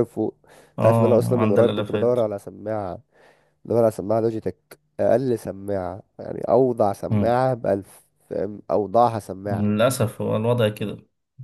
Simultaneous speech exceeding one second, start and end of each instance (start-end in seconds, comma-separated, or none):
0.8-2.2